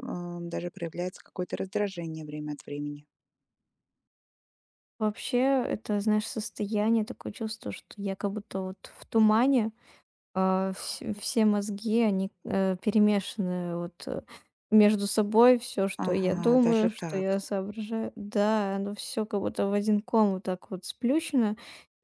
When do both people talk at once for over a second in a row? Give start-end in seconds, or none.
16.0-17.4